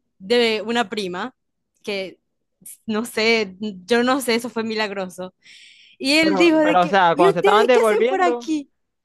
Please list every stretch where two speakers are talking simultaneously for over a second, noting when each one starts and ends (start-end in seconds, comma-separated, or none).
6.2-8.5